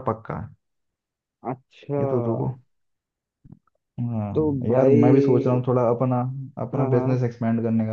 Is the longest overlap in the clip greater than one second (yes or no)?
yes